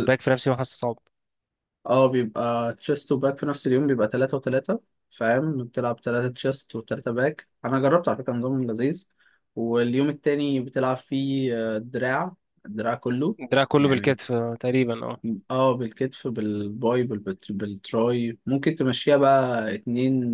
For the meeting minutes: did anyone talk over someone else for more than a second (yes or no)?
no